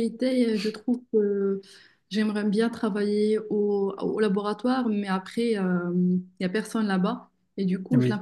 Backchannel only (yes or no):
yes